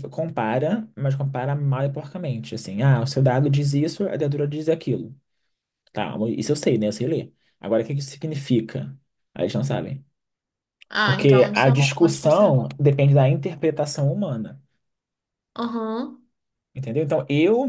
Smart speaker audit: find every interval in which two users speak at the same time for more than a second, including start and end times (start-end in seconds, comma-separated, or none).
11.0-12.8